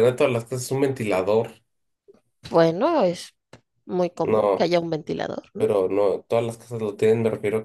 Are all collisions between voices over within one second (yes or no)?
yes